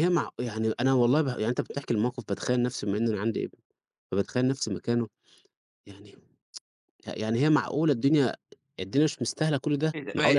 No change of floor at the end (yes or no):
no